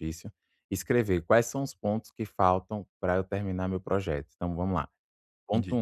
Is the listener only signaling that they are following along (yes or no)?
yes